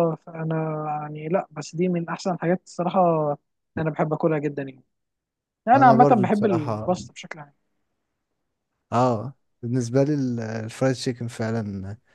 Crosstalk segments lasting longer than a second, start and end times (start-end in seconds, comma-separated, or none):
5.8-7.0